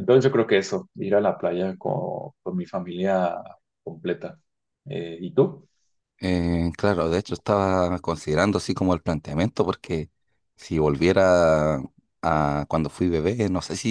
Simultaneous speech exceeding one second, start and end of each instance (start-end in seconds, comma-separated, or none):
none